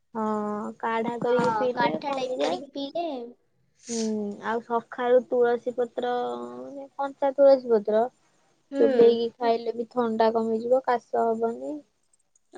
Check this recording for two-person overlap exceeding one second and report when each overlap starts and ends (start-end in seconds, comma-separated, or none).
1.2-3.0